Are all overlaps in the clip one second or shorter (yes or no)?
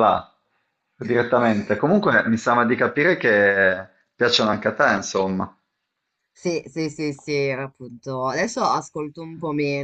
yes